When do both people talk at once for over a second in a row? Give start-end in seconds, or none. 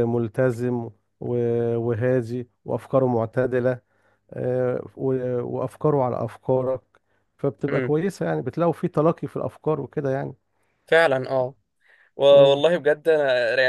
none